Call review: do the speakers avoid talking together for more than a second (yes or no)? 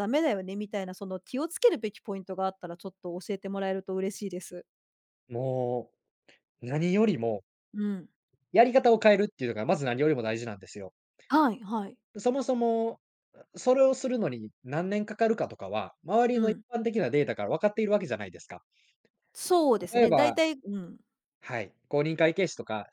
yes